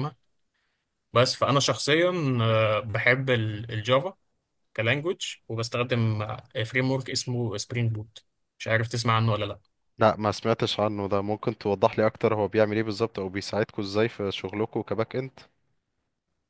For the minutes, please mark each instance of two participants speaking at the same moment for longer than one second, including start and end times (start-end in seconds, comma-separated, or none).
none